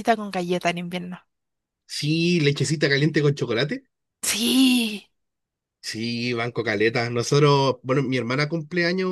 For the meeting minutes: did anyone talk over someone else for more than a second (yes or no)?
no